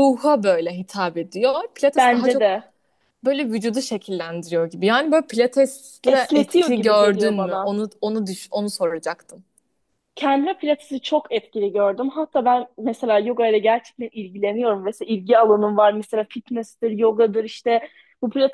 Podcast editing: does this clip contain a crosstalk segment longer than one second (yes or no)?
yes